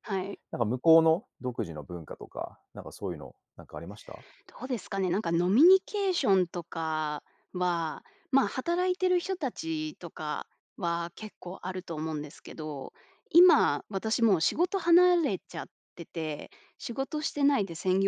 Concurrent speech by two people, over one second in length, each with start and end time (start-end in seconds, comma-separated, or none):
none